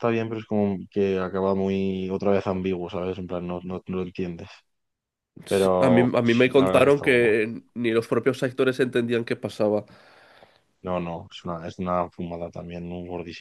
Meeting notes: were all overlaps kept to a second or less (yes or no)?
no